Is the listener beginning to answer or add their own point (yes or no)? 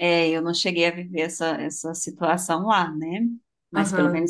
no